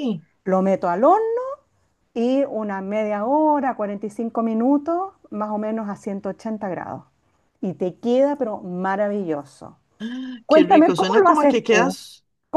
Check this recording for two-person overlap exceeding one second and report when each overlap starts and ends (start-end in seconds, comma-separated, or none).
10.5-12.0